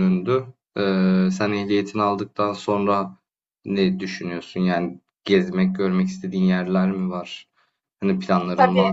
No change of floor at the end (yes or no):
no